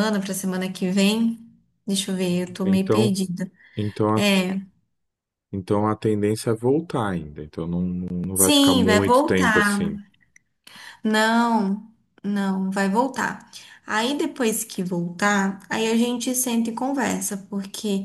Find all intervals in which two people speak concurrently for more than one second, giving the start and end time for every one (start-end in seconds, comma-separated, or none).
8.3-9.9